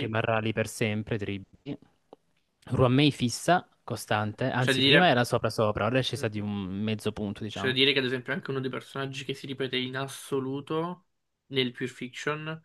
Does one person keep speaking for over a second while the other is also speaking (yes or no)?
no